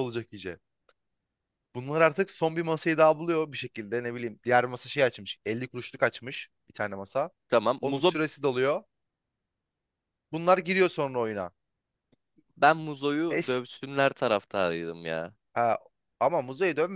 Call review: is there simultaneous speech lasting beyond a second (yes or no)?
no